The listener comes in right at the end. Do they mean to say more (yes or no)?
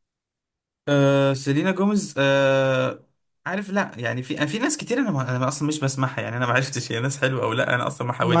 yes